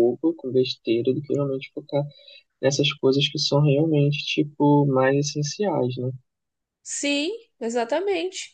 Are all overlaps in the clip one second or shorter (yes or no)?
yes